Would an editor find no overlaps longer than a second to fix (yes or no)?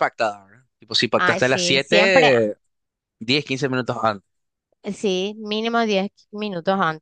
no